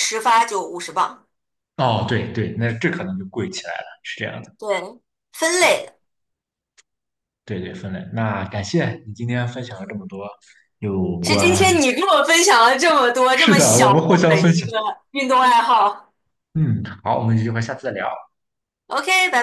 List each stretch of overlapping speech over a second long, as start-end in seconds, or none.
13.3-14.7